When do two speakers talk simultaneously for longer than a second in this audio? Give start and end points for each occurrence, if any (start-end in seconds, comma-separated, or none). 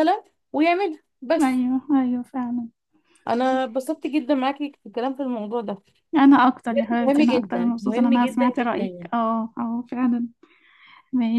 7.0-9.1